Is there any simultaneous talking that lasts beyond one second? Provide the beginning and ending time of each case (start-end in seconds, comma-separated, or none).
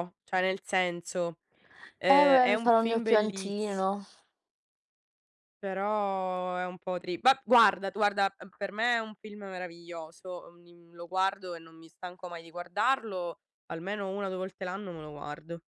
2.1-3.9